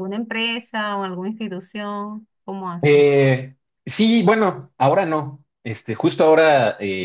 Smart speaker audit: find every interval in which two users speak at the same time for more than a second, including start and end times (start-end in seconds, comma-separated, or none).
none